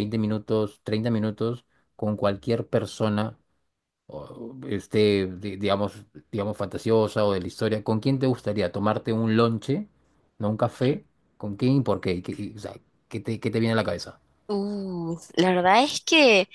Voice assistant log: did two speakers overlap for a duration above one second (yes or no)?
no